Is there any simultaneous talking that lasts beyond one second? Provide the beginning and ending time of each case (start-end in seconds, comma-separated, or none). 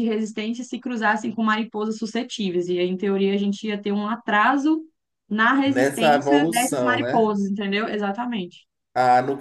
5.6-7.3